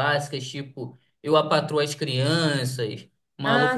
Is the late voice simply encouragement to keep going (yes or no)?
yes